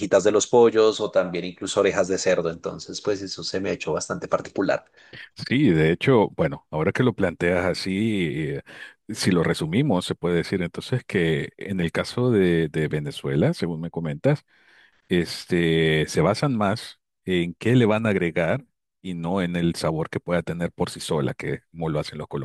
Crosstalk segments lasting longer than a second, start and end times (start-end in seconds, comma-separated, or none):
none